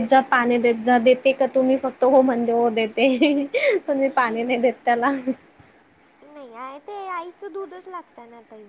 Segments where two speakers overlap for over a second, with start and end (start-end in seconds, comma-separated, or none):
none